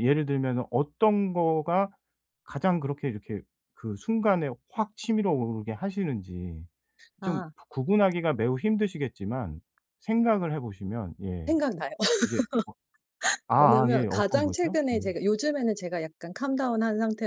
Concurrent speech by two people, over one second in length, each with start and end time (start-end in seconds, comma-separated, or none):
13.6-15.0